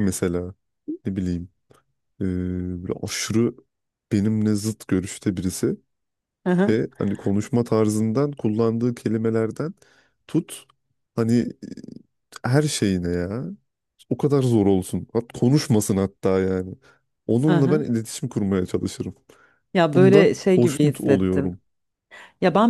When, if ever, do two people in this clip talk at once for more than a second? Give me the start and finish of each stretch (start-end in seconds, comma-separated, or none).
19.9-21.5